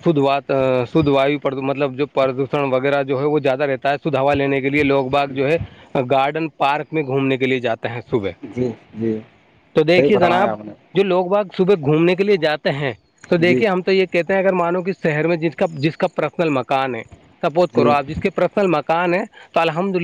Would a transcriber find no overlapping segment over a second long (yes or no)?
yes